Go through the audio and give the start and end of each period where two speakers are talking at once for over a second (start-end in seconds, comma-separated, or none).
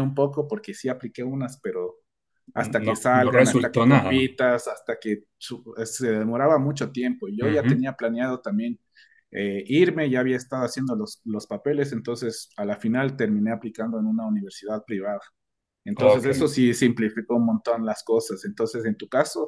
2.9-4.2